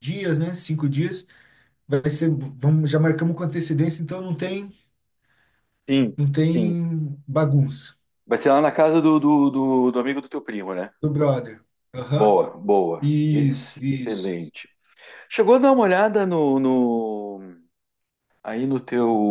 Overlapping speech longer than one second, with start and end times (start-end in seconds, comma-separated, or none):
13.0-14.4